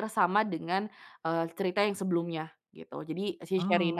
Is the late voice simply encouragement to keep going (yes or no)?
yes